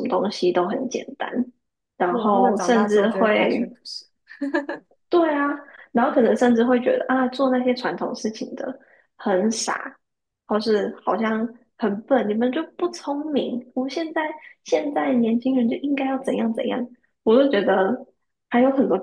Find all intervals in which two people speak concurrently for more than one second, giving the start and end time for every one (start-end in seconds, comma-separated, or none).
2.1-3.7